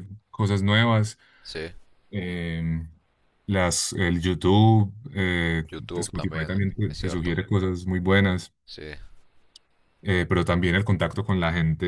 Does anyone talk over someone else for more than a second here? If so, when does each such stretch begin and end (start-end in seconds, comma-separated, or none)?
5.7-7.4